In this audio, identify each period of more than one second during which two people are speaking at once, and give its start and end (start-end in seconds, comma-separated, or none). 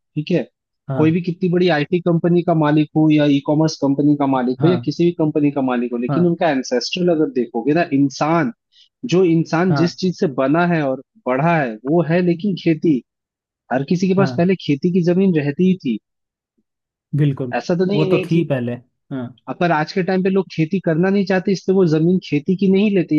none